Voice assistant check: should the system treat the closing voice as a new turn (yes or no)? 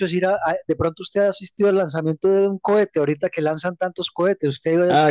yes